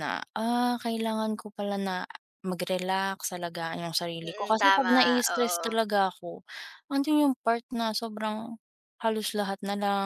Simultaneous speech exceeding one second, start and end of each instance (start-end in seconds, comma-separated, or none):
4.2-5.8